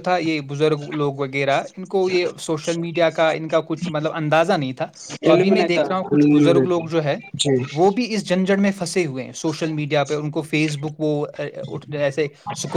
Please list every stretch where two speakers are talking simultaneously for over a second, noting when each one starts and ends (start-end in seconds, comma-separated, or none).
5.3-6.9